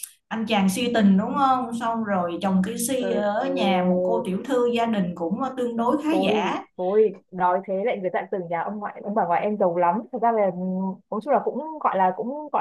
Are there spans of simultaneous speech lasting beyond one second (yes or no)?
yes